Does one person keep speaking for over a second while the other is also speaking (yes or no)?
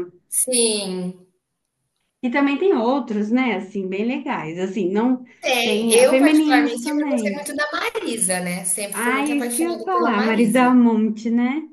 yes